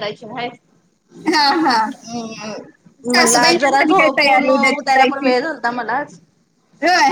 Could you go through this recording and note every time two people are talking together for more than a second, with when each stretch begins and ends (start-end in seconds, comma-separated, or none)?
3.1-5.3